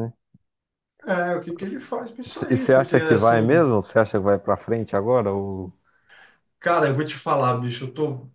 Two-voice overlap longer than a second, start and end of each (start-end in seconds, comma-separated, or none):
2.5-3.7